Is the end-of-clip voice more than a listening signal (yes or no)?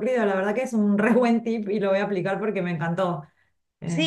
yes